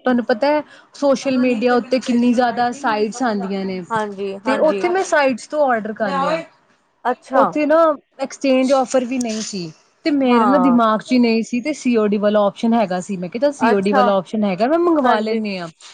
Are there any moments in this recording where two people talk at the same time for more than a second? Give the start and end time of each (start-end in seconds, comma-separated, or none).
none